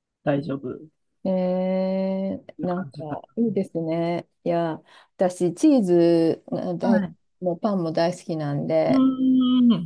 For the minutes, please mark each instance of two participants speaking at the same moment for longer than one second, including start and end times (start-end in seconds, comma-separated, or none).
none